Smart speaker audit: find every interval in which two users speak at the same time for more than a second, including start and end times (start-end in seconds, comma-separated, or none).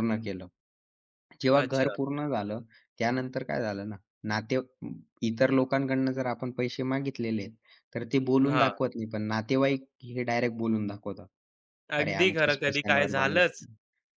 12.0-13.4